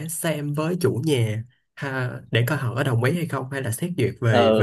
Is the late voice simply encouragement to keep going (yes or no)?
no